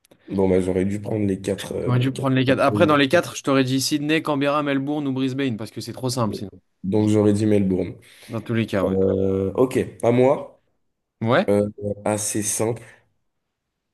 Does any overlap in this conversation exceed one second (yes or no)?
yes